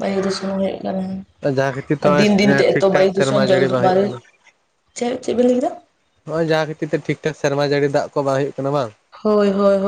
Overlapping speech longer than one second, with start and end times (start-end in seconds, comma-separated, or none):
2.0-4.0